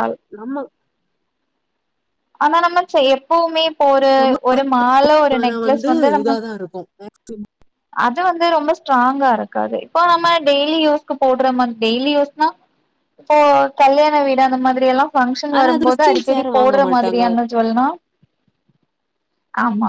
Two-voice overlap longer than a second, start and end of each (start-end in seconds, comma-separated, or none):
15.6-17.2